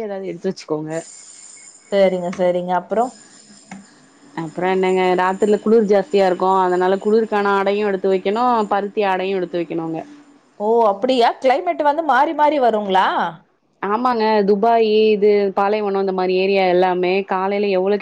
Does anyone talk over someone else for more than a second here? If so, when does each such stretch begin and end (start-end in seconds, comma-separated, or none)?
none